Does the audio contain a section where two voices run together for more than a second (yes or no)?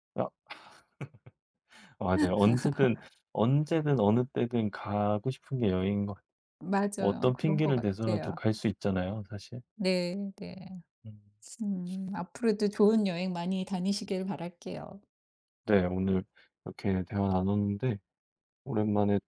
yes